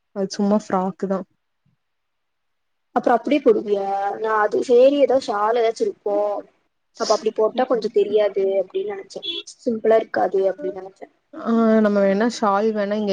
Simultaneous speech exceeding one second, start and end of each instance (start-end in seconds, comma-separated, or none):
none